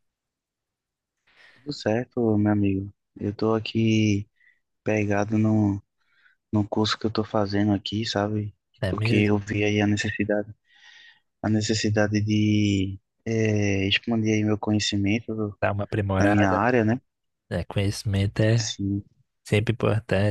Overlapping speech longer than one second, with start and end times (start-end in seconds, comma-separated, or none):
none